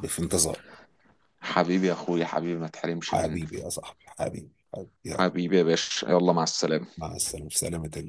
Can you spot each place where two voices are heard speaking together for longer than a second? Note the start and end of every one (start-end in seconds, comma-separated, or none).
none